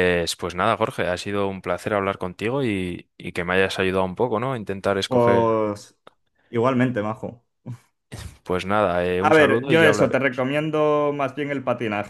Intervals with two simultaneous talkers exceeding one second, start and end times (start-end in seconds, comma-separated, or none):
9.2-10.4